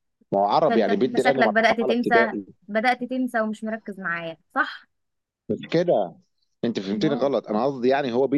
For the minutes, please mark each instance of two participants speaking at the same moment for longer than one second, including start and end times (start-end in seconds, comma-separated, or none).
0.6-2.4